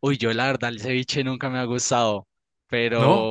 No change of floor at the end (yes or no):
yes